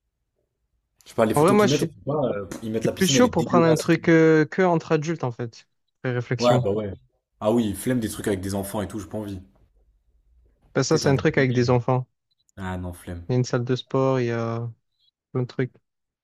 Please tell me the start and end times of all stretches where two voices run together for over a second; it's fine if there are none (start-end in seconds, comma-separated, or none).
2.7-4.1